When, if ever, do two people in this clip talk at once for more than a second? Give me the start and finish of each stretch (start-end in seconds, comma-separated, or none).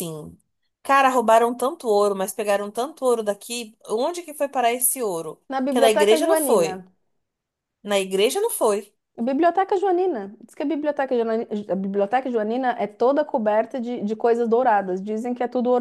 5.5-6.7